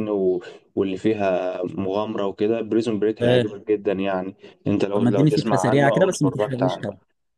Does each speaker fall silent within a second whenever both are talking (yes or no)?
no